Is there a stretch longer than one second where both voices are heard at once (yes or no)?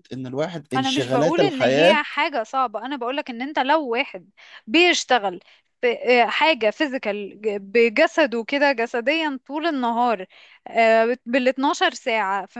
yes